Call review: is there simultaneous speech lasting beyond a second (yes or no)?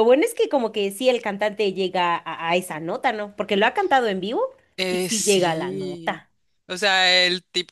yes